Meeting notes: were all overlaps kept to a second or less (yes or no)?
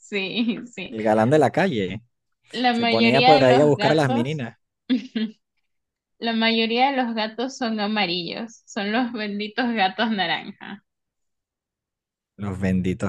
no